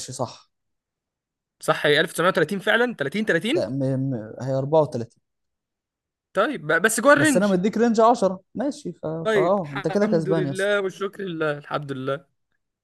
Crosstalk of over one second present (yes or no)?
yes